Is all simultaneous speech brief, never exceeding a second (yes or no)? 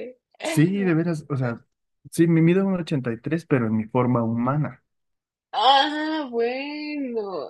yes